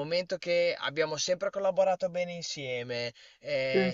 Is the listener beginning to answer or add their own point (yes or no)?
no